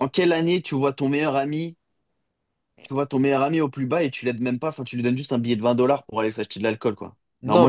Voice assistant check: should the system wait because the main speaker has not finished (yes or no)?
no